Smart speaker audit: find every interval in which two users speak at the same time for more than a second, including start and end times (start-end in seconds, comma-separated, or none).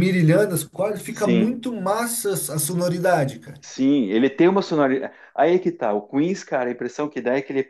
none